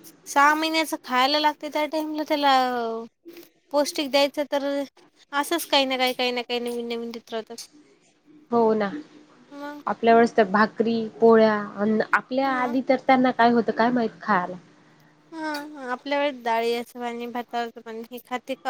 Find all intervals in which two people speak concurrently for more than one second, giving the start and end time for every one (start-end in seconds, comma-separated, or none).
none